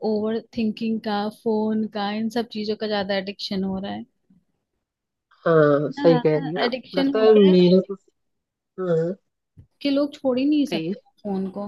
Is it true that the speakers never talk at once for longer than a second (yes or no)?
no